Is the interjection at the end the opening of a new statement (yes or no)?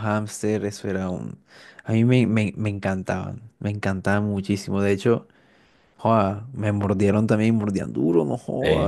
no